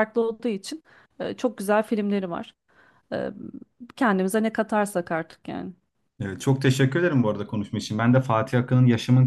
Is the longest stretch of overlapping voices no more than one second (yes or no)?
yes